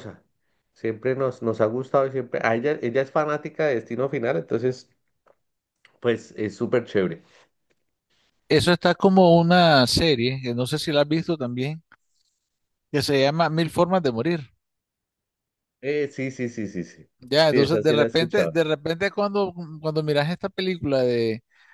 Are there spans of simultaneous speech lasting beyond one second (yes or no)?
yes